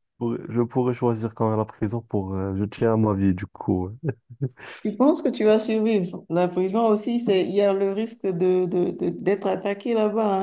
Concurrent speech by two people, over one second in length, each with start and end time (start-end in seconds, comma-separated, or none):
none